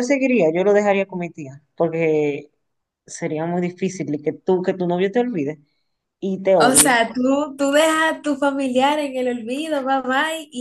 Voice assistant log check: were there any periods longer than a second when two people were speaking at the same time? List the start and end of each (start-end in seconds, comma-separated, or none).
none